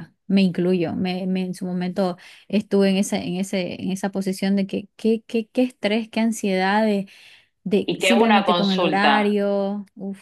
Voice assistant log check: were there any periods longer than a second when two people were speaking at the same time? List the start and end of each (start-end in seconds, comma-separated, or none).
7.8-9.3